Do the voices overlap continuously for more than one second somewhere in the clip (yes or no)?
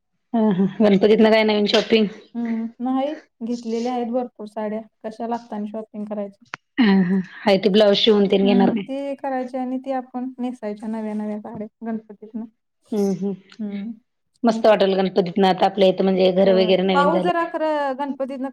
yes